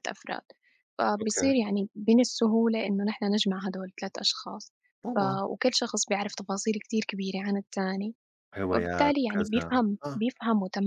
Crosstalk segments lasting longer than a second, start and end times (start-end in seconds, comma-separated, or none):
8.7-10.2